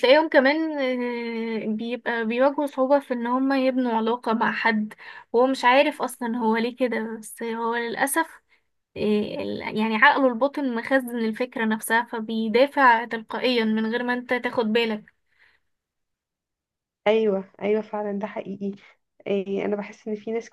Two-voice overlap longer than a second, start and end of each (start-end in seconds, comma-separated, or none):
none